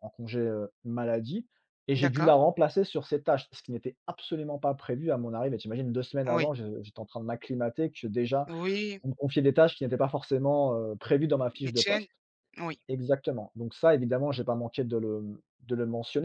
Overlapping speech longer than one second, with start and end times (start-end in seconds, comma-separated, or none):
none